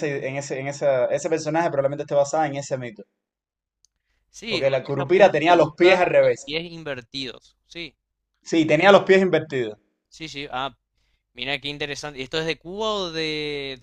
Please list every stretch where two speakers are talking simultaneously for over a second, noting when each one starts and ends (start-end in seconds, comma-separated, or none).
4.5-6.5